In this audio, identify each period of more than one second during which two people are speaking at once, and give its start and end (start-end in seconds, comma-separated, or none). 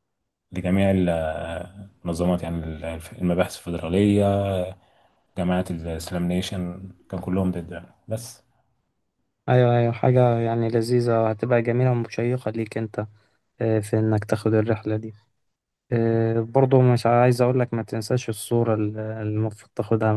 none